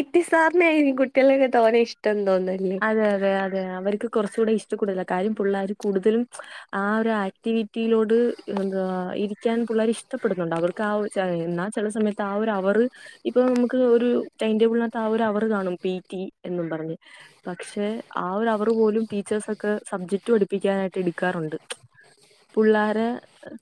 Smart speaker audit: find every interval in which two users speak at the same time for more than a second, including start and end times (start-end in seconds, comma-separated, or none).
none